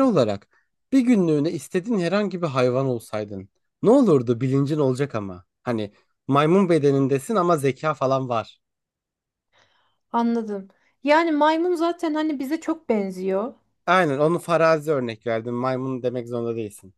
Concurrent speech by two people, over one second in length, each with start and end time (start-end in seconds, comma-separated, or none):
none